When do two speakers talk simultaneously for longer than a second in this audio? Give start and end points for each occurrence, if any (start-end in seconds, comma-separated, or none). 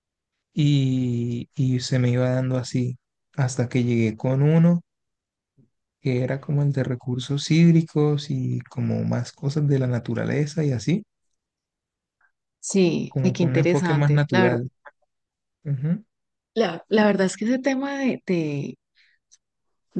13.1-14.6